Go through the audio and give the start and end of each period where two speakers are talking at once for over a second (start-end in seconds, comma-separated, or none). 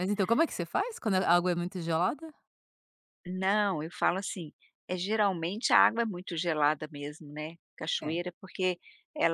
none